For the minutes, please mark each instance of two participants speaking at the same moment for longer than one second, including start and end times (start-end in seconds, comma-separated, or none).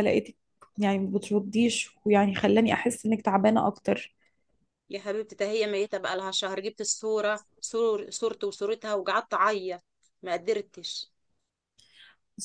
none